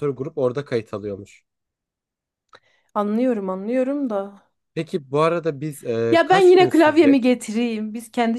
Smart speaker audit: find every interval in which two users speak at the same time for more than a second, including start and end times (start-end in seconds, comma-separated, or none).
6.1-7.3